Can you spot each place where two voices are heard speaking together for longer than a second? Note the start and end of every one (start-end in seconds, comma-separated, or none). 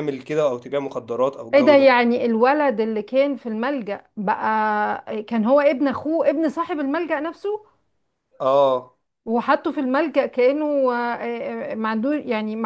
none